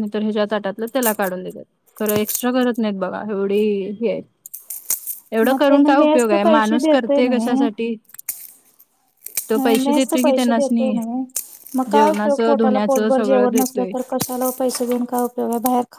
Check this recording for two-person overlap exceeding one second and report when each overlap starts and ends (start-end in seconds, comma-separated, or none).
5.4-7.2, 9.6-10.9, 11.9-13.9